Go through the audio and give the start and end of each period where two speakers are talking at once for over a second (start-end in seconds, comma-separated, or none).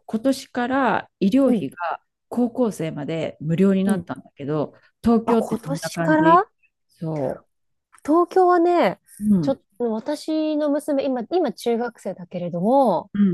5.2-6.4